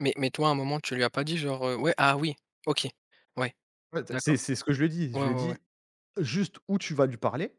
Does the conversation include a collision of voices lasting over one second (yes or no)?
no